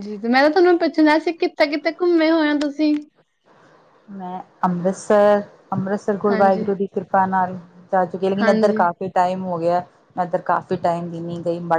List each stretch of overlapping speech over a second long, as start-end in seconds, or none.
none